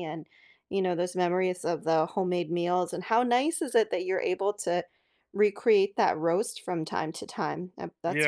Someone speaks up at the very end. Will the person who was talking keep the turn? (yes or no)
no